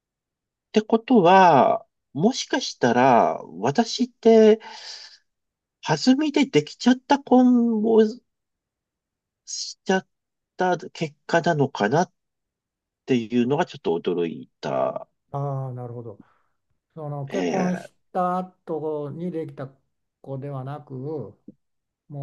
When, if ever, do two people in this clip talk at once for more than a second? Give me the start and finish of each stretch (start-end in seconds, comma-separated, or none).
none